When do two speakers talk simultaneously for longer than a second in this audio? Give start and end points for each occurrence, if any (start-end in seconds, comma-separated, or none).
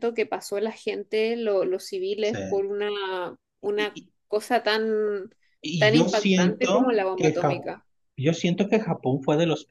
5.8-7.6